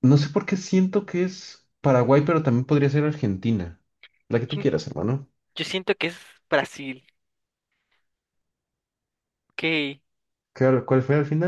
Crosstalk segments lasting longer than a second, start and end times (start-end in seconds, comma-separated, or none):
none